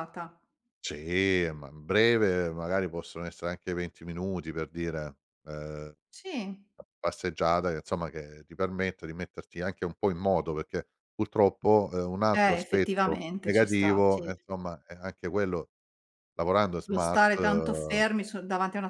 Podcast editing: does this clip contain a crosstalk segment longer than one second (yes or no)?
yes